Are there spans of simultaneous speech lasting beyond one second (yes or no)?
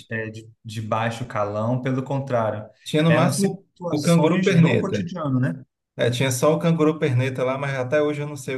yes